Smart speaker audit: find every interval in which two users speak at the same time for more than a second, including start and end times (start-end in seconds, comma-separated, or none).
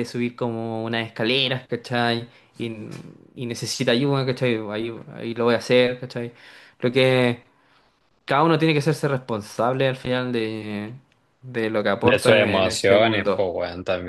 12.0-13.5